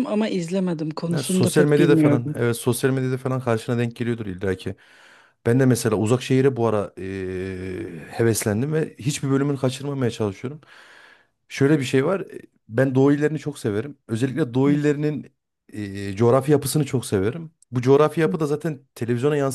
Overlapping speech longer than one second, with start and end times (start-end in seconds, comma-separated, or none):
1.1-2.4